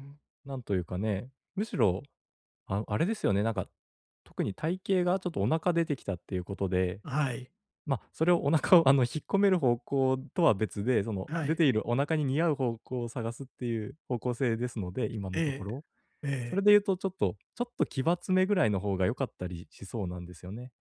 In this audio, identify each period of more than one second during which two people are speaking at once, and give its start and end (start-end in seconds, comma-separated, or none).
none